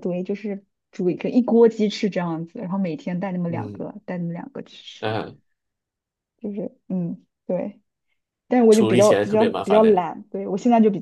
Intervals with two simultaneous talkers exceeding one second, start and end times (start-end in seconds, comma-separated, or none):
8.7-10.1